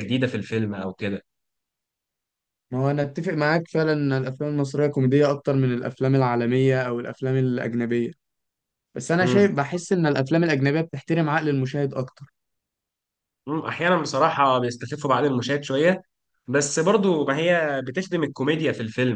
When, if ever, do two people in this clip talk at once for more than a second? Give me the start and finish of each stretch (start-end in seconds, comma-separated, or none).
none